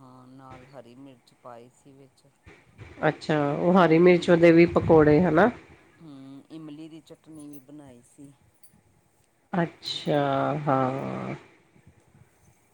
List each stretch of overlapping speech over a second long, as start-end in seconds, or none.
none